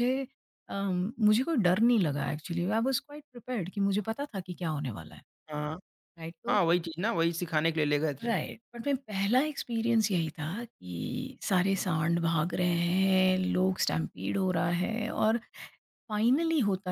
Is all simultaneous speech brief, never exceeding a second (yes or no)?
yes